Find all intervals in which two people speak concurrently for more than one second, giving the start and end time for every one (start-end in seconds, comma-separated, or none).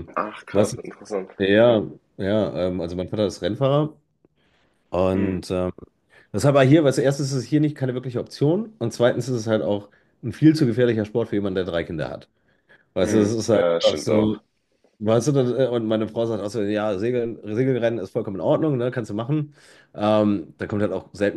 13.0-14.4